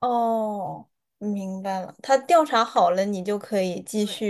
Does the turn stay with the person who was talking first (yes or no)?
no